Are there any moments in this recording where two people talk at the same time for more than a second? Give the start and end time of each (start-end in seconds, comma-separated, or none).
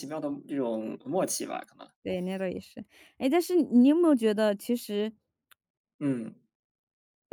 none